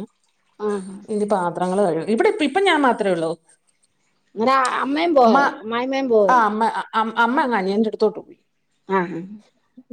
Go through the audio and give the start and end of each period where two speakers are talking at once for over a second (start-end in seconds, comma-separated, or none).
none